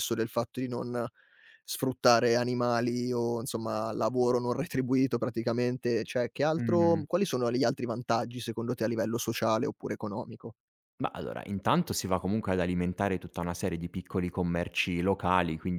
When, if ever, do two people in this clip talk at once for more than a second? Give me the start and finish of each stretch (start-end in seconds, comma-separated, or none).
none